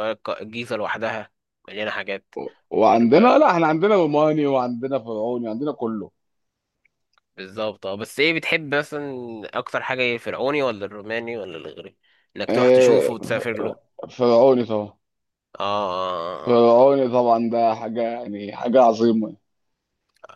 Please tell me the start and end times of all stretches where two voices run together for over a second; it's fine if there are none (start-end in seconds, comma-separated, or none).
12.5-13.8